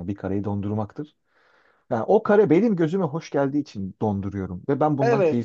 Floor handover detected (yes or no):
yes